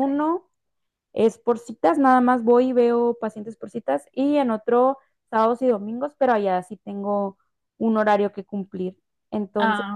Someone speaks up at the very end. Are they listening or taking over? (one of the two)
listening